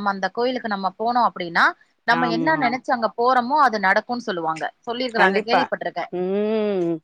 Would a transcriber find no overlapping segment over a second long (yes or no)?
yes